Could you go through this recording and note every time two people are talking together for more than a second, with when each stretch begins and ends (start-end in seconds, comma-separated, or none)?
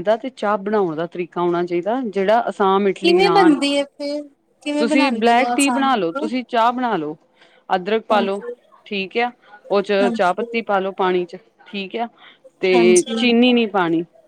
4.8-6.3